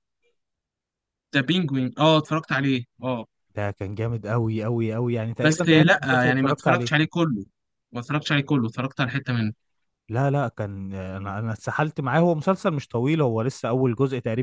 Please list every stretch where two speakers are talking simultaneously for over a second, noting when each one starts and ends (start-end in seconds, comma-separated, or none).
5.4-6.9